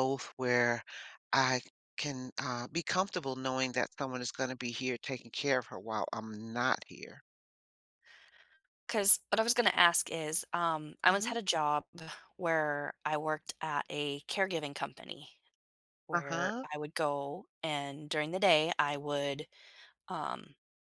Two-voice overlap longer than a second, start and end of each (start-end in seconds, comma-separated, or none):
none